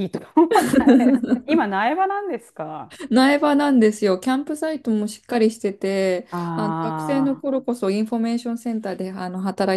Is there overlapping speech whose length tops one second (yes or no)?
no